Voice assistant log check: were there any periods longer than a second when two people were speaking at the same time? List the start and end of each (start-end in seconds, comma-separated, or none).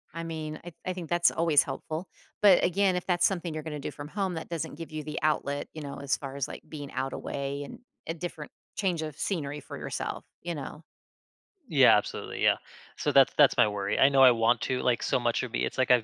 none